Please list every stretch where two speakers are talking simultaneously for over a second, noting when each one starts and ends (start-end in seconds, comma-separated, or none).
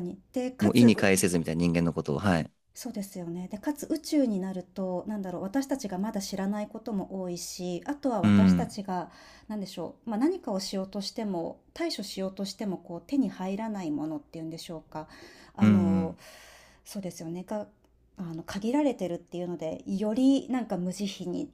none